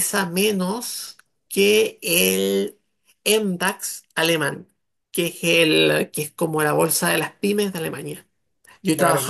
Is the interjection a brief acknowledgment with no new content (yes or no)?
yes